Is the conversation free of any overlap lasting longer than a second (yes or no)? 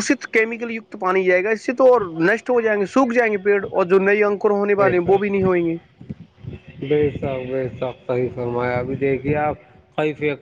yes